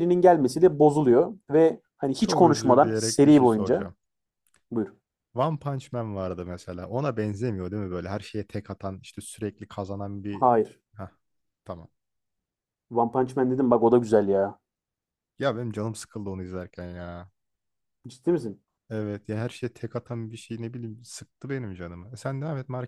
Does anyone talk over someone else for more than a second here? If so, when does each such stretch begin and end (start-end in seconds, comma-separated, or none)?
2.2-3.9